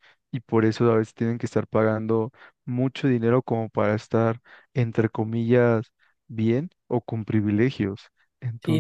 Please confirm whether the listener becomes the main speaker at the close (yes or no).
yes